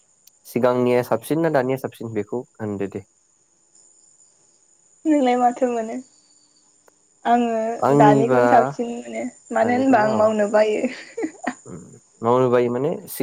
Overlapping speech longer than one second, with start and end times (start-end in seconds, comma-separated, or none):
none